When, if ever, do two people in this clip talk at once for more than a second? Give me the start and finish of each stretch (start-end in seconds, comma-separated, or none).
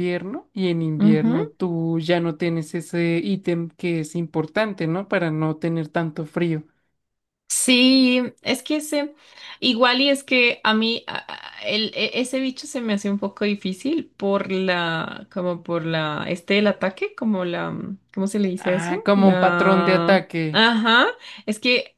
18.7-20.4